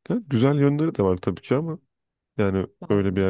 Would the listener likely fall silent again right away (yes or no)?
yes